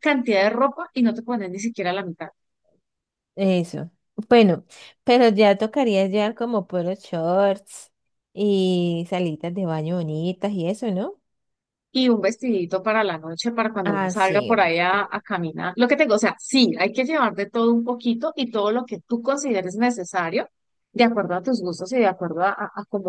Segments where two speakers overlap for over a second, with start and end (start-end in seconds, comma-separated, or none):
13.8-15.2